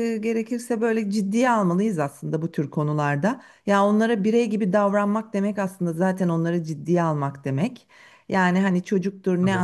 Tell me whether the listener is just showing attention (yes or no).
yes